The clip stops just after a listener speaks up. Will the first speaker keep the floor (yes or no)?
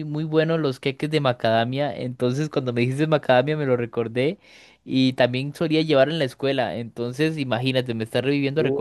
no